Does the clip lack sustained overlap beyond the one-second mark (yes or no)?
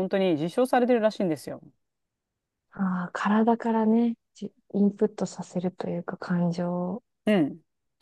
yes